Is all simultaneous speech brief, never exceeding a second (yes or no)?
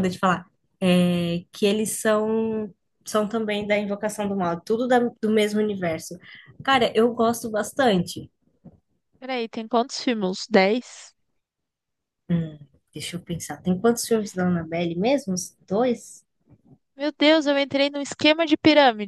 yes